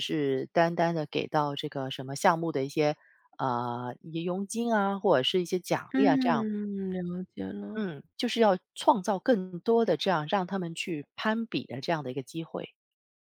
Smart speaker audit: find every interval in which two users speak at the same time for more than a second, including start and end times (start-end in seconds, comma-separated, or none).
none